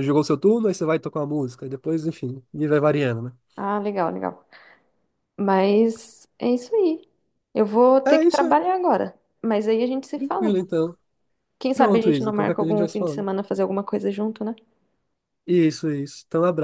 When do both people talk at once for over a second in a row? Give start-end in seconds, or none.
11.7-13.3